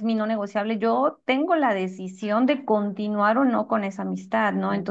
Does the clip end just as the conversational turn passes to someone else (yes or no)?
no